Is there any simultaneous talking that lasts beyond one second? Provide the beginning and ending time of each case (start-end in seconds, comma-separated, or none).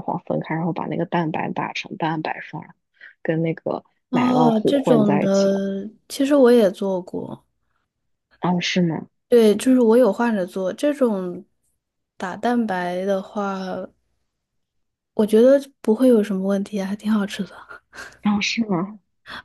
4.1-5.6